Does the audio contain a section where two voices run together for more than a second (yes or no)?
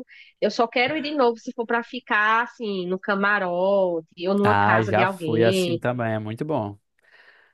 yes